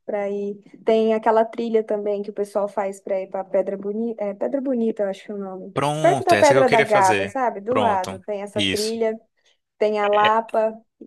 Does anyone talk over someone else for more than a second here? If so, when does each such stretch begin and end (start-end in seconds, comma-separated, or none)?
5.7-9.0